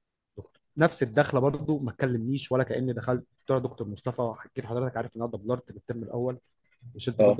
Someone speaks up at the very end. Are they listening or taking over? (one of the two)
listening